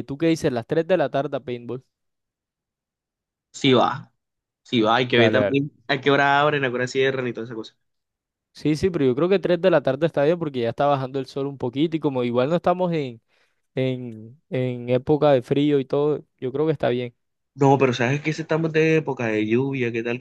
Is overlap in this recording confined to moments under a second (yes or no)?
yes